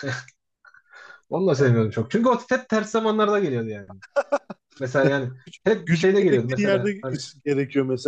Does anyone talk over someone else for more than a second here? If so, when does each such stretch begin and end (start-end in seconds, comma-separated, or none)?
5.0-7.2